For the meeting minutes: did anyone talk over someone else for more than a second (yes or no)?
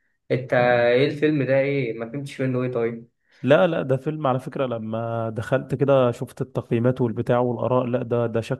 no